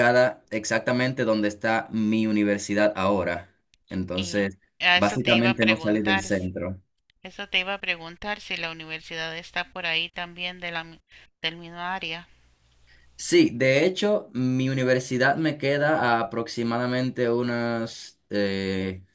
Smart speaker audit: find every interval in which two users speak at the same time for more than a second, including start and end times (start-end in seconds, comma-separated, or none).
4.1-6.5